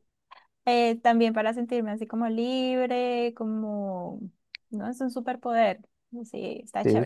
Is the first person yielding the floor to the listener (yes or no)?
yes